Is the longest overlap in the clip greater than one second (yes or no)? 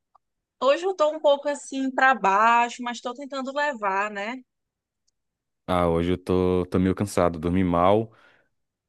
no